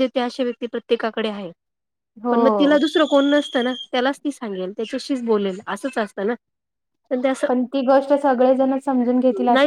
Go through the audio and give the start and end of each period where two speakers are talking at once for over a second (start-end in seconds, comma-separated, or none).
none